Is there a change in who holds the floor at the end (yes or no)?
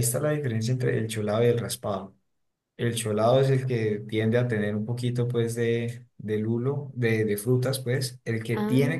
no